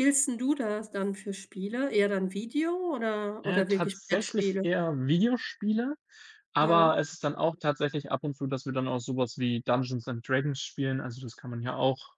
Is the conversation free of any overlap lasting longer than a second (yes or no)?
no